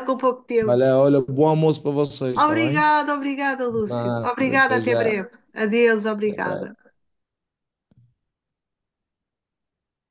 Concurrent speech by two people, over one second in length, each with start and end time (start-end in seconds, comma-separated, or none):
3.9-5.1